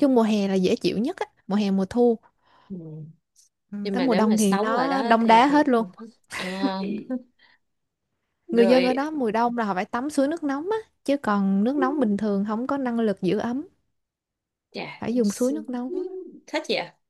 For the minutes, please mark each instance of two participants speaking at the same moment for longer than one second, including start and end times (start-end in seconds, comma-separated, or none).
3.8-5.6